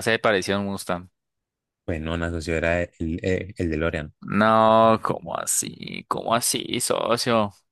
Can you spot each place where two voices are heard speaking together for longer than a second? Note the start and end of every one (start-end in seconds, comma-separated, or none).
none